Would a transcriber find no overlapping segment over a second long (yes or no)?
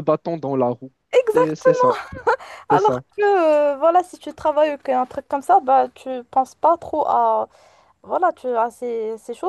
yes